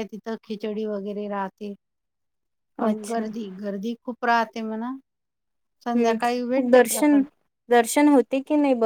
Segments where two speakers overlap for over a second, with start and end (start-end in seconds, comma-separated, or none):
6.0-7.2